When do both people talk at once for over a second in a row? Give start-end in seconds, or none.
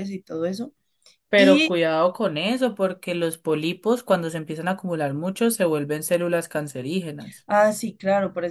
none